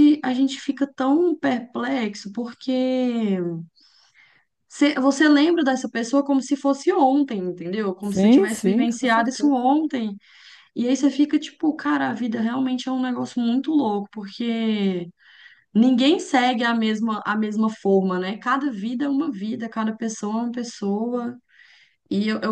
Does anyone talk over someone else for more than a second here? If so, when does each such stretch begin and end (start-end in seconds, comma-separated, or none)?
8.0-9.6